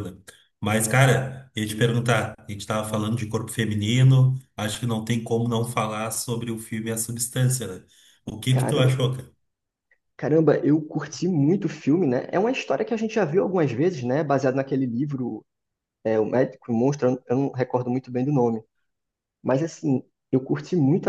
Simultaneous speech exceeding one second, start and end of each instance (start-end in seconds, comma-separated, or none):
none